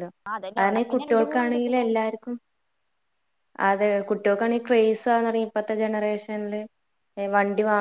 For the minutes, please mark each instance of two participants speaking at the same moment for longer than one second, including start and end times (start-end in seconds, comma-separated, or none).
0.6-1.9